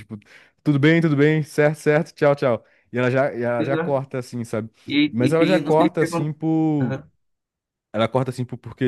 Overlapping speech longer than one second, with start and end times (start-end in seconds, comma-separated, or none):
5.1-6.3